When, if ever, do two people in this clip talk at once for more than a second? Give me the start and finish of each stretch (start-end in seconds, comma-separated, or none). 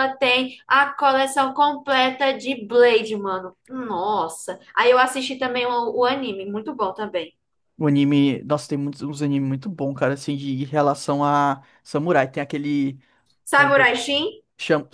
none